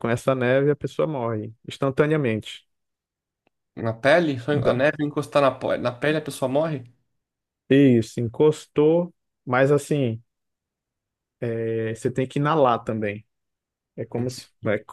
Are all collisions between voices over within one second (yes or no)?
yes